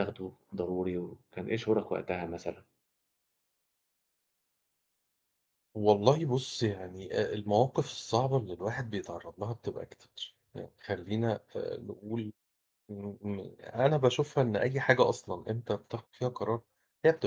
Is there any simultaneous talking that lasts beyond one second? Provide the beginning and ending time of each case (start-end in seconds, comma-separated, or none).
none